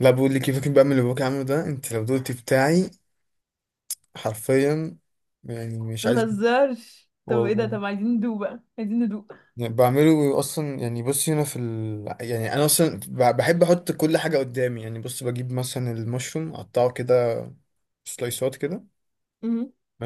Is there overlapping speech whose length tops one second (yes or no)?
no